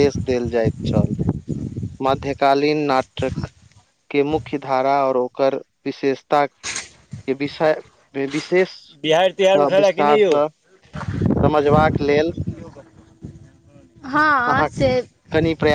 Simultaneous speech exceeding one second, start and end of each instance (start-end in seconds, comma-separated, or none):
9.0-10.3